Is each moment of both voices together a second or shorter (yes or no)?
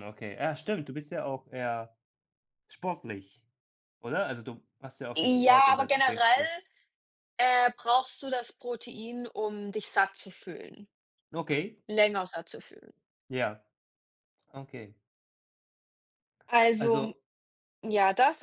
no